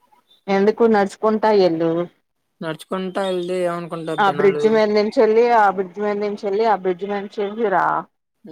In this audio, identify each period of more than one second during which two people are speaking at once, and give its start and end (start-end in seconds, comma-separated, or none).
none